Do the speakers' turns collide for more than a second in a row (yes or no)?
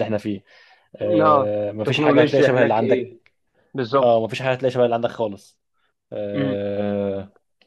yes